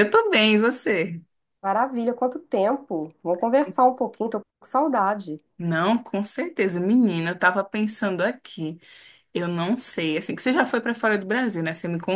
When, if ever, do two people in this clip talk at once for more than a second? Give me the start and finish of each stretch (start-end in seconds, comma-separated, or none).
none